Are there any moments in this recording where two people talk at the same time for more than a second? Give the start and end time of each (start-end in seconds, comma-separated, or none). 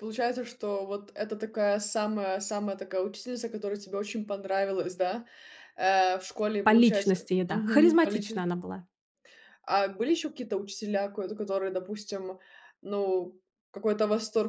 6.6-8.4